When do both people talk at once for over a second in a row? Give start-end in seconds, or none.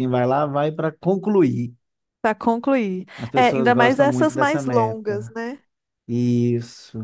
3.1-5.3